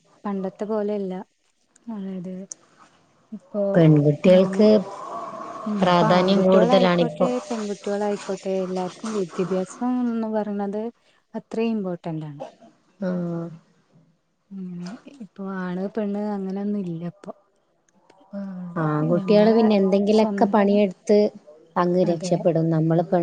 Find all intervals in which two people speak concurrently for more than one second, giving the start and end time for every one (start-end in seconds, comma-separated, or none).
5.9-7.3